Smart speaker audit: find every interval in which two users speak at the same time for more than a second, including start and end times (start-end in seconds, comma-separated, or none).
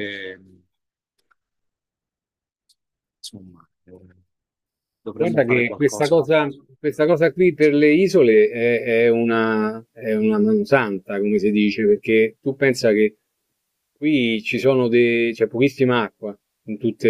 5.1-6.6